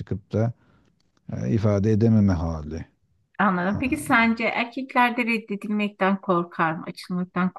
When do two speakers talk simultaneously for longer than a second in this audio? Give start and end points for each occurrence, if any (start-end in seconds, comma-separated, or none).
none